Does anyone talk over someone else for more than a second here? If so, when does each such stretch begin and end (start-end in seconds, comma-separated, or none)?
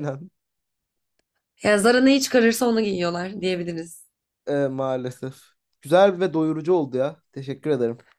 none